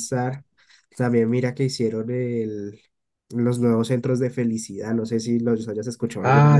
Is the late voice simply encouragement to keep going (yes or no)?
no